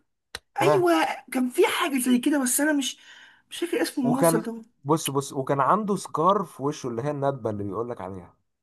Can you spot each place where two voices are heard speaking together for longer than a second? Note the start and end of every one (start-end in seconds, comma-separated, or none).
none